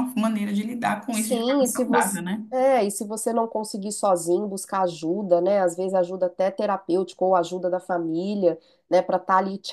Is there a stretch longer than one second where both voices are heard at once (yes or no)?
yes